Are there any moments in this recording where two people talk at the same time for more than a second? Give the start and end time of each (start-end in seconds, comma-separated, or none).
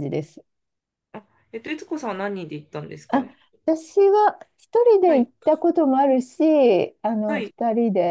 none